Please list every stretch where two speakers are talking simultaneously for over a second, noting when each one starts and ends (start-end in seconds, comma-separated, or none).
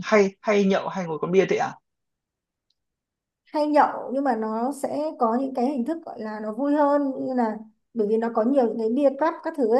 none